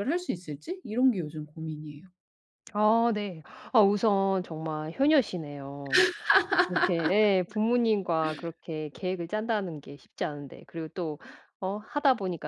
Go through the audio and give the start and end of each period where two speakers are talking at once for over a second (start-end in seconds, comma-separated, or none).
none